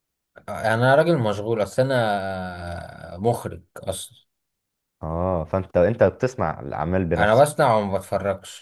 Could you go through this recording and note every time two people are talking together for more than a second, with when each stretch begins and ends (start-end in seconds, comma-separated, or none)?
none